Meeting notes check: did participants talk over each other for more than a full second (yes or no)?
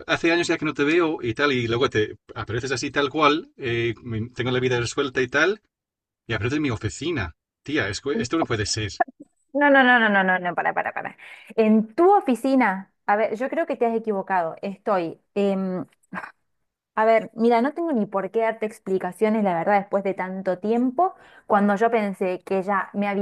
no